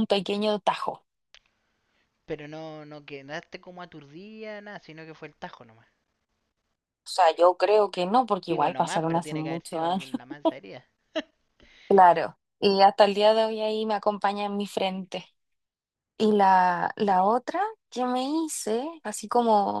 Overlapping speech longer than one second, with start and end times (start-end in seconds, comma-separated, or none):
8.5-10.1